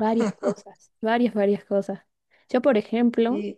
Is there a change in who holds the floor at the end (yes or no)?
no